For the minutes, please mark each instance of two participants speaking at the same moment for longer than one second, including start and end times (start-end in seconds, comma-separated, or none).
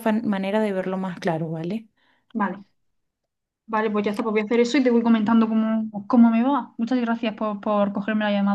none